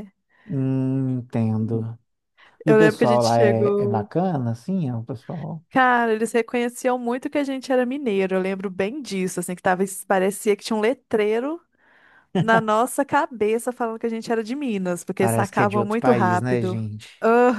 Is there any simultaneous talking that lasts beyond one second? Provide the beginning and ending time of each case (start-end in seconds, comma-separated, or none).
2.7-4.1, 15.2-16.8